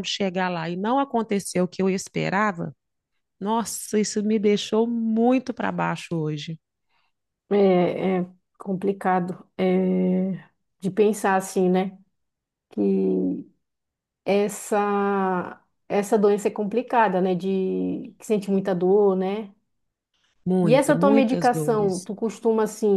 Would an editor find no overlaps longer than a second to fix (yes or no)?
no